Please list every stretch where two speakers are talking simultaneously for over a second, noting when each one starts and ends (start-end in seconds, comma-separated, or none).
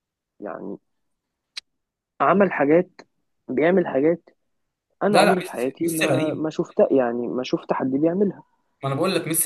5.1-6.5